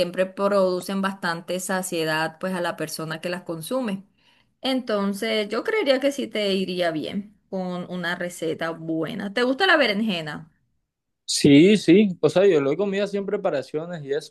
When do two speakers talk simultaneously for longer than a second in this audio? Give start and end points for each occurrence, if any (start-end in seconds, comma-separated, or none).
none